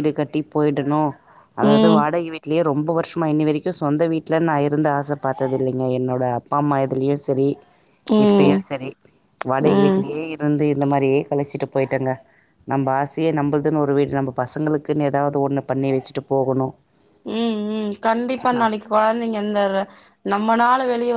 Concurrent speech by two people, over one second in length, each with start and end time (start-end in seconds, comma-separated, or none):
none